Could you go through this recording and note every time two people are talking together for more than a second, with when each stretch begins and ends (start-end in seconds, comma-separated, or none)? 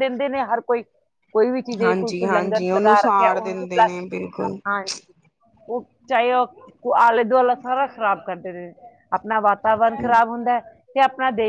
1.8-3.6